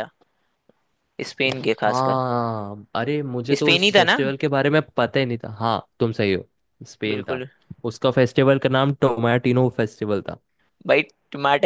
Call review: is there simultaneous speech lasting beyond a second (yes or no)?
no